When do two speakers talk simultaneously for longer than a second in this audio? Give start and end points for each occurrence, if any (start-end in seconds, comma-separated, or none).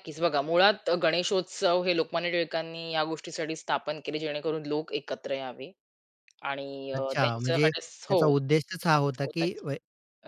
7.0-8.3